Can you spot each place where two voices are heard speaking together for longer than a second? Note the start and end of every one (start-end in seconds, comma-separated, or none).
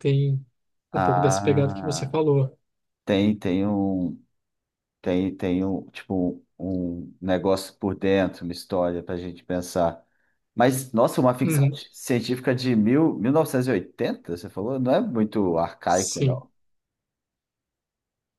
0.9-2.1